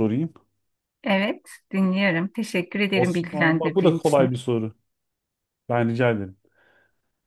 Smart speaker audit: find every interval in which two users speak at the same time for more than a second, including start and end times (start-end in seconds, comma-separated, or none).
2.9-4.3